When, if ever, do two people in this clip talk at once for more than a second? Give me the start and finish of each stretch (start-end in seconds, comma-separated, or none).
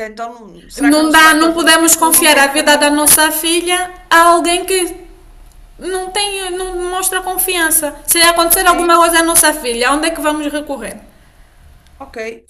0.8-3.0